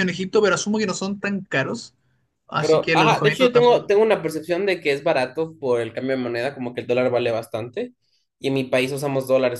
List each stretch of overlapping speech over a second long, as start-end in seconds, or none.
2.6-3.9